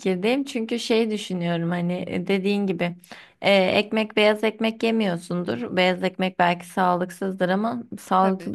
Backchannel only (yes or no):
yes